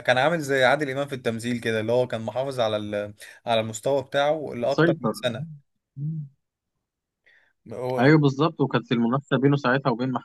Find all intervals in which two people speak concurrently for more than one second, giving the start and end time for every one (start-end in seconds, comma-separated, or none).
none